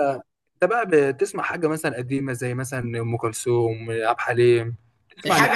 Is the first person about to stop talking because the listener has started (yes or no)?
yes